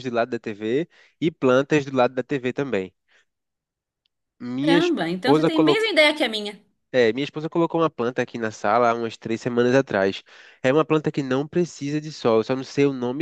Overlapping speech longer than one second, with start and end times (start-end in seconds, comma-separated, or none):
4.6-5.8